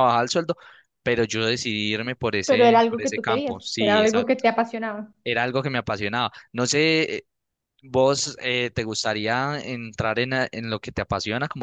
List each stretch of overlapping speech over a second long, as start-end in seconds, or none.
2.5-4.2